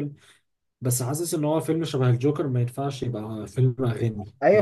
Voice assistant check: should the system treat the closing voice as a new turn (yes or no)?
yes